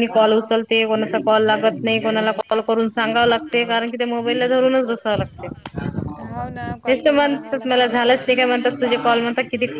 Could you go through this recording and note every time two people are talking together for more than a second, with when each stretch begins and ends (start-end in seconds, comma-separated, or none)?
6.9-8.4